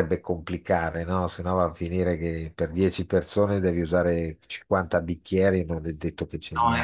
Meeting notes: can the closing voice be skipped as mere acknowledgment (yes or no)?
no